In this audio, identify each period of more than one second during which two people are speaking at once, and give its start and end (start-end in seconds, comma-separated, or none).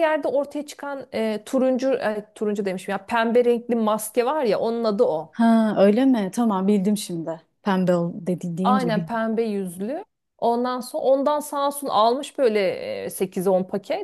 none